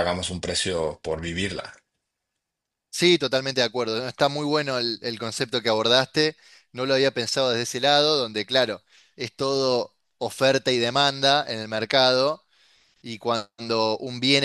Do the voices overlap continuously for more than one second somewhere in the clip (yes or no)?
no